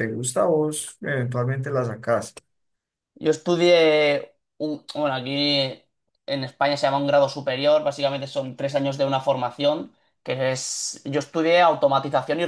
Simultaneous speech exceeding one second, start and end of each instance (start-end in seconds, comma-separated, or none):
none